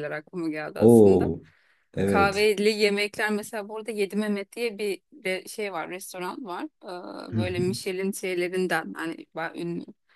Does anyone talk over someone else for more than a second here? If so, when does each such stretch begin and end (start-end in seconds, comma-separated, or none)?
none